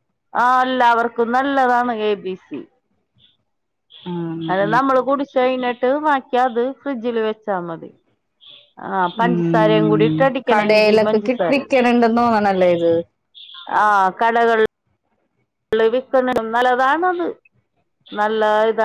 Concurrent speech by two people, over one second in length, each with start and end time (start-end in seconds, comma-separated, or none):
9.2-11.7